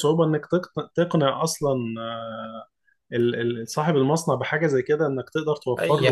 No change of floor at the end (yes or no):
no